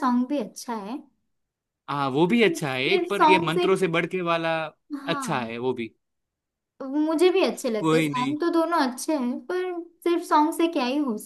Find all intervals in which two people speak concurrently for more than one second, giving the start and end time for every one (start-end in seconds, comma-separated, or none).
2.3-3.6